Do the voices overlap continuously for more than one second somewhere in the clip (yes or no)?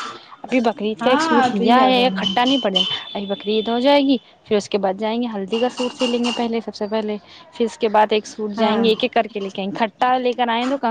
yes